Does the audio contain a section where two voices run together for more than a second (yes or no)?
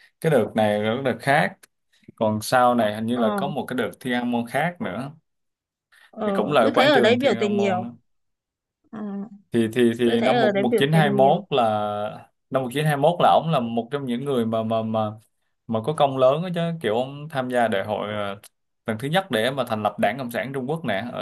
yes